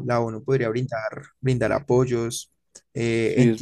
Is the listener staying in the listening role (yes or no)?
yes